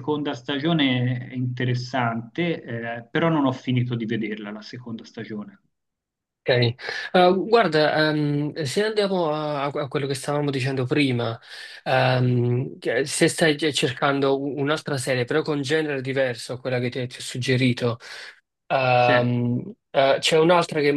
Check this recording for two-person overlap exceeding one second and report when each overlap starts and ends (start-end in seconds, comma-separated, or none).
none